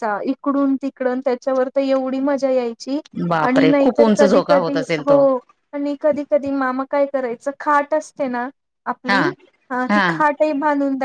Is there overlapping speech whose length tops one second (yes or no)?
yes